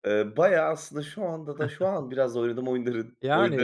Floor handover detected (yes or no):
yes